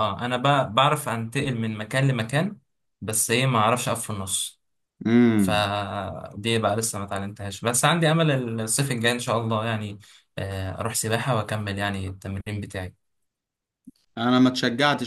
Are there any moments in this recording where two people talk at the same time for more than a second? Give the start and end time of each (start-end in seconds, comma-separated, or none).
none